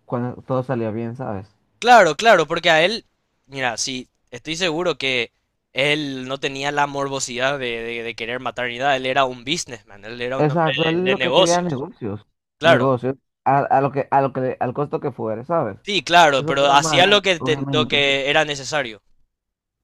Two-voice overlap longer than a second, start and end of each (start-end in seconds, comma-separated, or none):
10.4-11.8, 16.4-18.0